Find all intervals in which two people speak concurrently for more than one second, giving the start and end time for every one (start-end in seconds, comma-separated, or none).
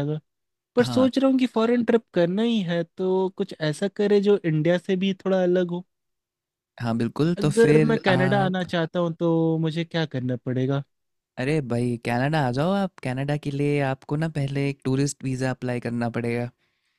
7.4-8.7